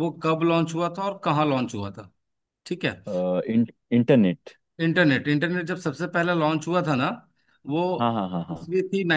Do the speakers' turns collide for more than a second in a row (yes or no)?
no